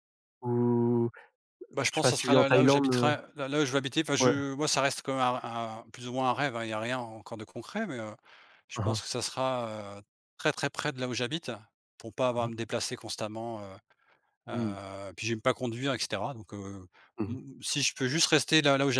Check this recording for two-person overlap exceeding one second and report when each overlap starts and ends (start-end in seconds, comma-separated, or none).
1.9-3.1